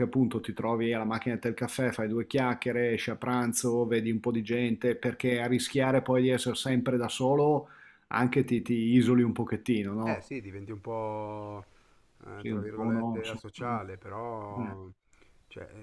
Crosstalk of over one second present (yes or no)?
yes